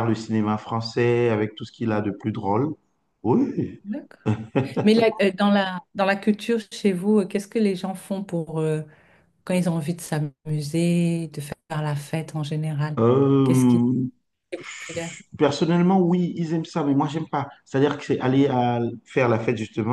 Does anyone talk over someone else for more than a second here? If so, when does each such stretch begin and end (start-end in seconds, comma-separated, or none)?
none